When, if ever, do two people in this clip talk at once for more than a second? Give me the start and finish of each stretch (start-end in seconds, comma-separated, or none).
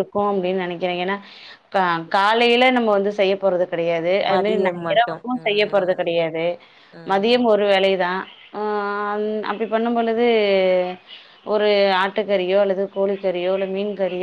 4.3-6.0